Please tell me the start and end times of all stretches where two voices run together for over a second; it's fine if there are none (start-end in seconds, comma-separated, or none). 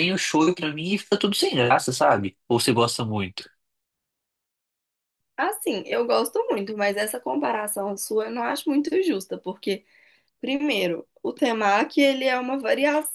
none